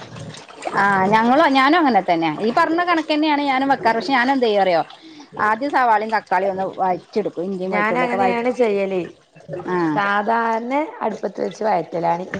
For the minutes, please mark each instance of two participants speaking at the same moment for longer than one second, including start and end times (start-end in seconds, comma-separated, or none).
none